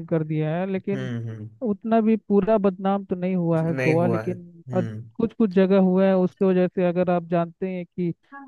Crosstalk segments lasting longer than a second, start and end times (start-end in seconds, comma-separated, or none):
3.6-5.1